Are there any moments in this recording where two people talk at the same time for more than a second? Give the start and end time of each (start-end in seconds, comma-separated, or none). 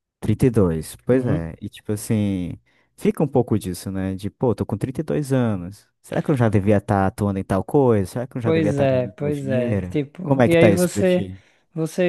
8.4-11.3